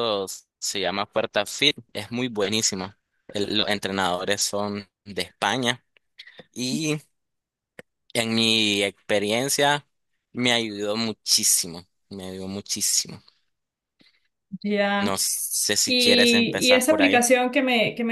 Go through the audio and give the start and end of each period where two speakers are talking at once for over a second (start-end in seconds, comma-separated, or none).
15.9-17.2